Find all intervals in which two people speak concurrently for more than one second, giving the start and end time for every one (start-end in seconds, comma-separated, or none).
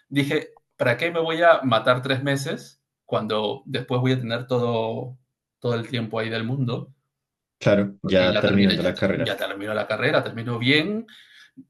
8.0-9.4